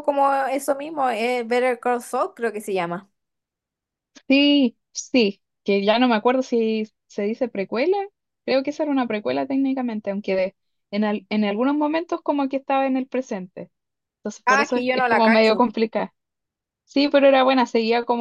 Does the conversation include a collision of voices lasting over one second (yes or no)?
yes